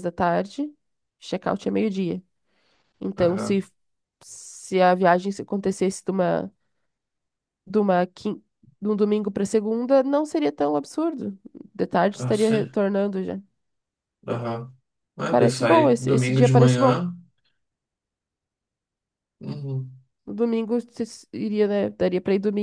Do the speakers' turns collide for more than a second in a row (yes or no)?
yes